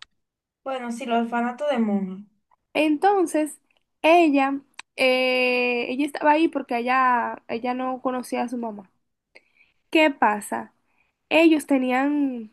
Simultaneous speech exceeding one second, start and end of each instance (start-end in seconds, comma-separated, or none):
none